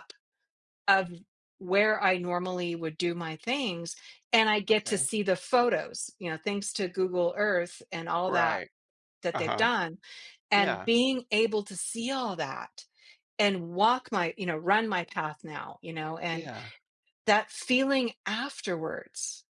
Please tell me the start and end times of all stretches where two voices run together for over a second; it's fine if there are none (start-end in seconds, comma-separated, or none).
none